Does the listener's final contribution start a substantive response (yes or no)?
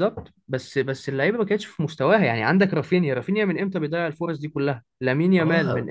yes